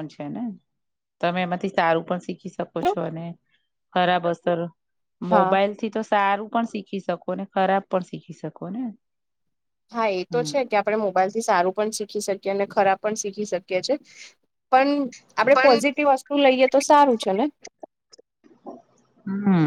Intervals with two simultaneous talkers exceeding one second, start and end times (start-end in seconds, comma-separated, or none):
none